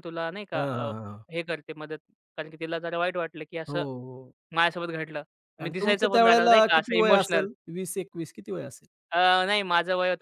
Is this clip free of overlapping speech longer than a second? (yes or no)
no